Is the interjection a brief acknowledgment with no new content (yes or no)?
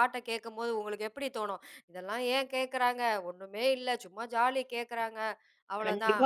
no